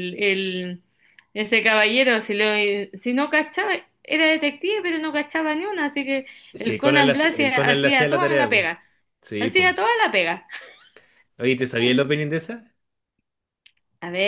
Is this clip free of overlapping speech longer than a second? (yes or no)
no